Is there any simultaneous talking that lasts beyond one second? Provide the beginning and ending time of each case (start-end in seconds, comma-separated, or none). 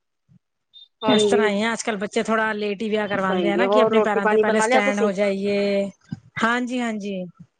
3.2-5.1